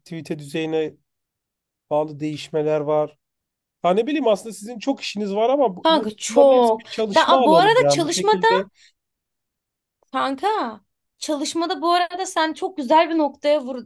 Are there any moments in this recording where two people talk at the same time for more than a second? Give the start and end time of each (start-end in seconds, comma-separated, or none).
5.8-8.3